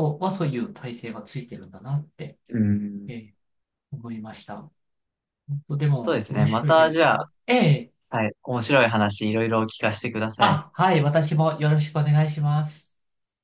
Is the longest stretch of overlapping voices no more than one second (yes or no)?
no